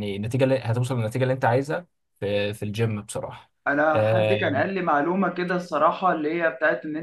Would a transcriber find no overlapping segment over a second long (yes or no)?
yes